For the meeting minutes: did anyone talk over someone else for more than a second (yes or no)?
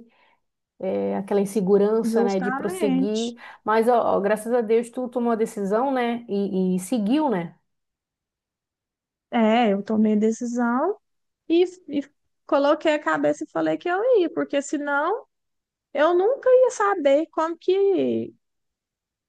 yes